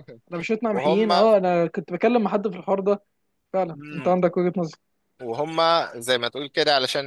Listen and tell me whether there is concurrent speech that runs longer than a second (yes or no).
no